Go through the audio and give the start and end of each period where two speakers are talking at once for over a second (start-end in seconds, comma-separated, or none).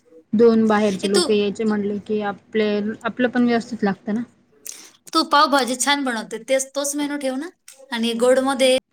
none